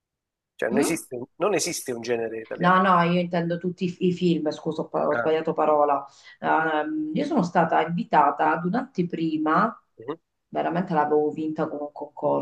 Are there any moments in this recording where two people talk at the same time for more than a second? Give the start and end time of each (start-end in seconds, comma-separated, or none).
none